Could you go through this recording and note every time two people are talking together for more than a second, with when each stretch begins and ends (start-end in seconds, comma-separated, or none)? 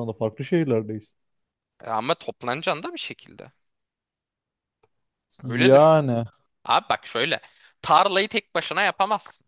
none